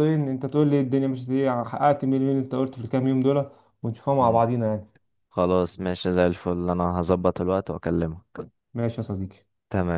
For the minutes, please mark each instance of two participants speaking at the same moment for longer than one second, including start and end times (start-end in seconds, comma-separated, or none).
none